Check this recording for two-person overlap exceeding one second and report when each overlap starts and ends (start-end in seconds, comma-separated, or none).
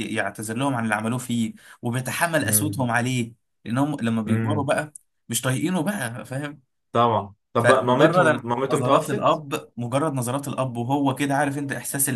7.6-9.4